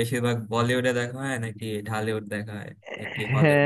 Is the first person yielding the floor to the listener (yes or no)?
yes